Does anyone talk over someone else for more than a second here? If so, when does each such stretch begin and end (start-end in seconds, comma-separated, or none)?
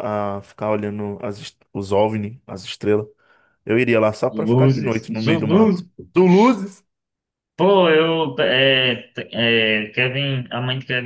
4.3-5.9